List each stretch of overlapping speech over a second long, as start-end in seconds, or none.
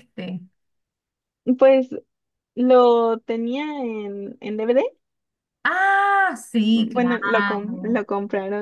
6.7-8.0